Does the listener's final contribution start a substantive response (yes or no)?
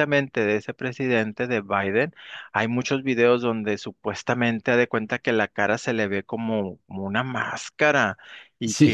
no